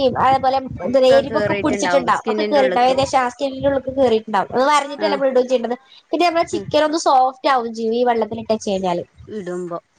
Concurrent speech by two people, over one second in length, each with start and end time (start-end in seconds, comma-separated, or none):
0.9-3.0